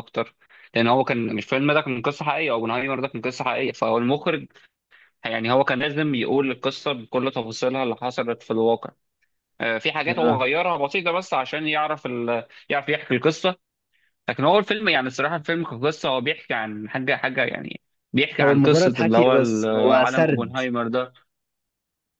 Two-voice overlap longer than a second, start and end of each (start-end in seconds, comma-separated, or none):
18.4-20.6